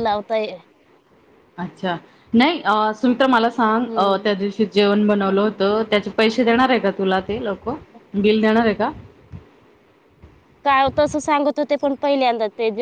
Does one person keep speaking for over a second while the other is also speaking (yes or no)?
no